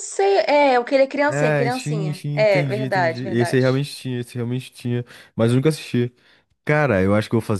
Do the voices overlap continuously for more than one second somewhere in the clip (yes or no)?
yes